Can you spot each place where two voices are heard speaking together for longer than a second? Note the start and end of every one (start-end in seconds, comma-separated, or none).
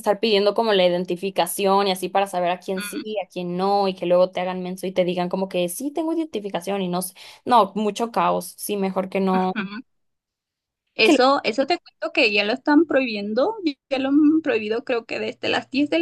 none